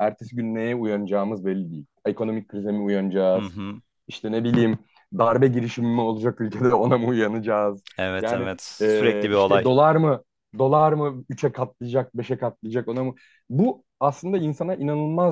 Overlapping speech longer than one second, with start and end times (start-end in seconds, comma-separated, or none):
8.2-9.7